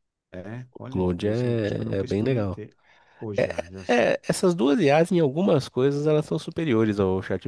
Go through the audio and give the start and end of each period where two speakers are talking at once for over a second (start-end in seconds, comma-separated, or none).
0.7-2.6